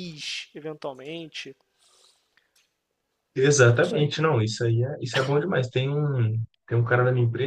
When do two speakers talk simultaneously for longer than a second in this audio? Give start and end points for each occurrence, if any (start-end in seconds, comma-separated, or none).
none